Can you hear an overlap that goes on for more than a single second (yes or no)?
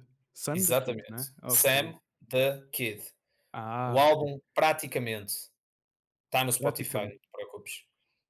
yes